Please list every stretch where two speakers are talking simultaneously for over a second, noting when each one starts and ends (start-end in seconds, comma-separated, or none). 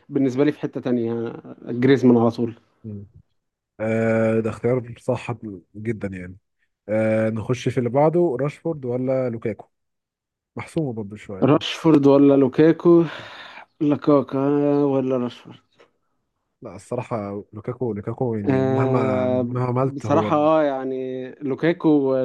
18.5-20.3